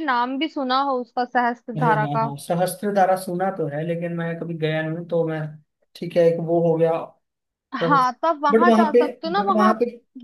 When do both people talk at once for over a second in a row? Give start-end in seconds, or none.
7.8-9.7